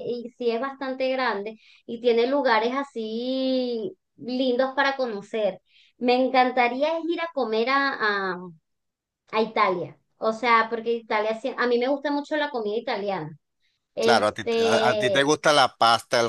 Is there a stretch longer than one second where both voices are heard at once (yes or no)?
yes